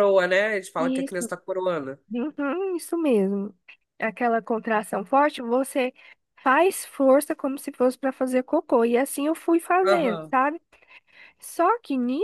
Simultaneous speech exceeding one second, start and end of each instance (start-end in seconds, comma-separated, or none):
none